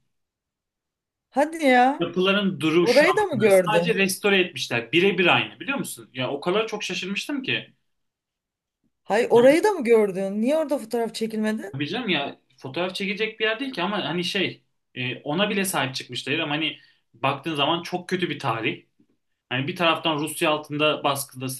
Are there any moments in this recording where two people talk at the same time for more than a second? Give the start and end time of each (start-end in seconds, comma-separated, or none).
2.8-4.0